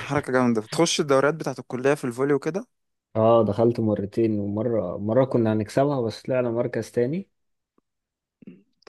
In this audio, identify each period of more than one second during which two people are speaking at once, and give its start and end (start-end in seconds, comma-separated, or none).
none